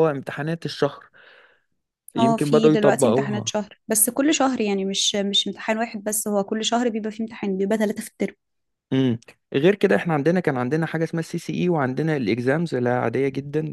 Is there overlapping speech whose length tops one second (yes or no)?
yes